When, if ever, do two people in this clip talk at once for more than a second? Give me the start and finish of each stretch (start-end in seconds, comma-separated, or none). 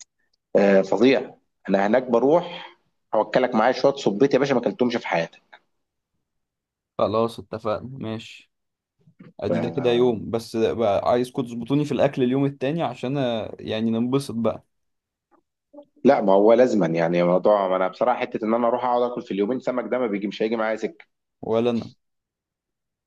none